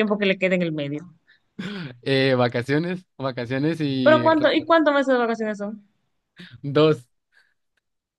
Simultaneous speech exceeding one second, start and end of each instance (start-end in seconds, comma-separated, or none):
none